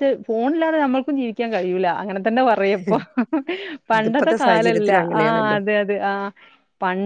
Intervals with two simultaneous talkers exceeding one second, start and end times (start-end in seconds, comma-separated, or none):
4.0-5.6